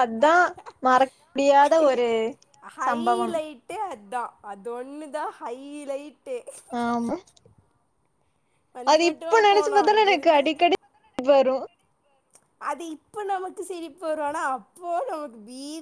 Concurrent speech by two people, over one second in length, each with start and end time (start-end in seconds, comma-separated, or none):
8.9-10.6